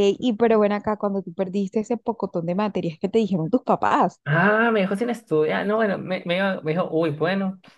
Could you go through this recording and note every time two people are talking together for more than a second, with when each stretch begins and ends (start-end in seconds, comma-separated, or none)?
none